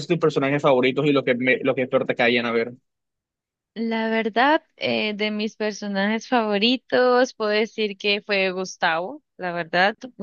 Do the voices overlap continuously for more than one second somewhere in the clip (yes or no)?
no